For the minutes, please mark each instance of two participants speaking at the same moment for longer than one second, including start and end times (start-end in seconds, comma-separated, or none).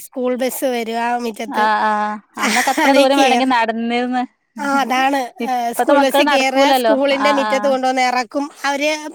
5.5-7.9